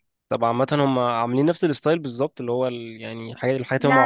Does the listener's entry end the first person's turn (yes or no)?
no